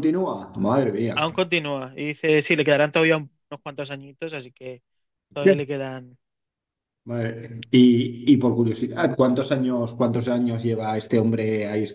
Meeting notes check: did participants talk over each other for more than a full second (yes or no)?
no